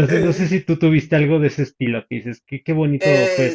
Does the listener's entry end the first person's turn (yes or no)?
yes